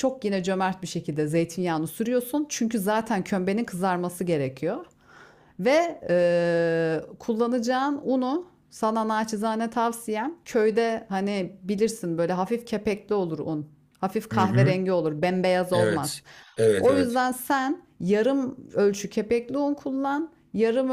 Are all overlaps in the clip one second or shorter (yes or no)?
yes